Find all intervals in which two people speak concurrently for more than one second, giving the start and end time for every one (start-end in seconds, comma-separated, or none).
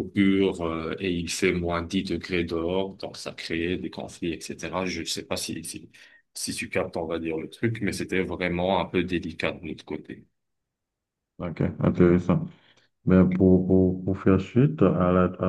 none